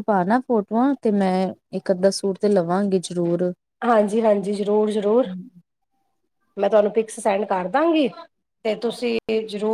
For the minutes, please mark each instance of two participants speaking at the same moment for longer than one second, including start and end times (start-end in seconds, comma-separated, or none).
none